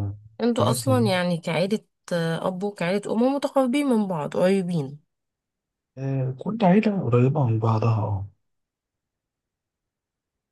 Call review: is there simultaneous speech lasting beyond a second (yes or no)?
no